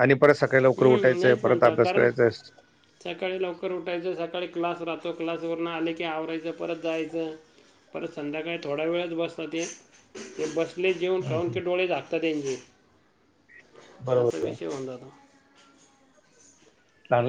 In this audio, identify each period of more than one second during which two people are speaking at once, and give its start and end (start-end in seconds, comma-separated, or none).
0.8-2.1